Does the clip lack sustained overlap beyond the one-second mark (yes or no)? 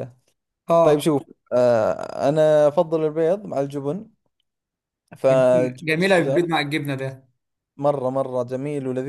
no